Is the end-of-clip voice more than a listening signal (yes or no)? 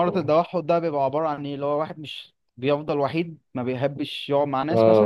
yes